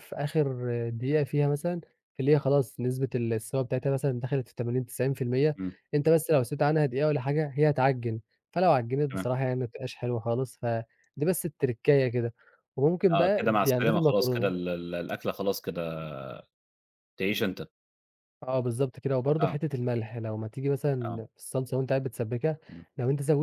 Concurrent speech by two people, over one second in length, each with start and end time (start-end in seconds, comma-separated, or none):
13.1-14.5